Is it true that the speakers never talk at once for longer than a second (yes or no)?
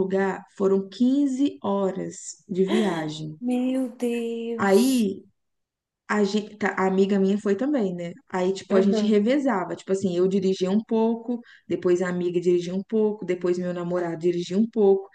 yes